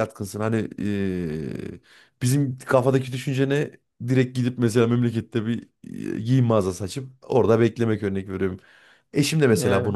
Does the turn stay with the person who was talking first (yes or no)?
yes